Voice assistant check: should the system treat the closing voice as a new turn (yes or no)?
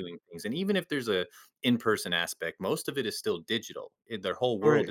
no